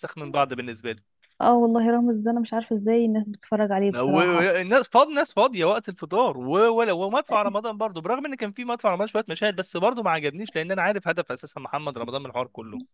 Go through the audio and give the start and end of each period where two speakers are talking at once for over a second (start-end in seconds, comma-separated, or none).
none